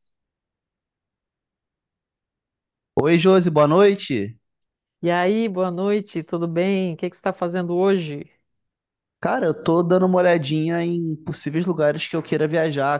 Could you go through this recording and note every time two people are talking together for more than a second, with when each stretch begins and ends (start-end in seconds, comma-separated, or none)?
none